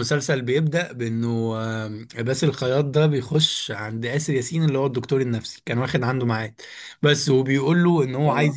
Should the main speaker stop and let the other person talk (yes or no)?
no